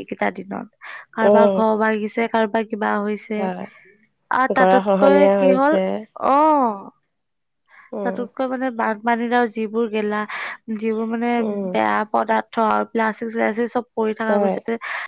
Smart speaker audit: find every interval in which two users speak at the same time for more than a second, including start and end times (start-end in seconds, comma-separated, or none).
none